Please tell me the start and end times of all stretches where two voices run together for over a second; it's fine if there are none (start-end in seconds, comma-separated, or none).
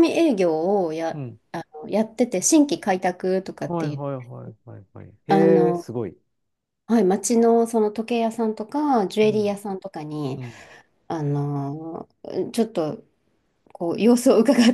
none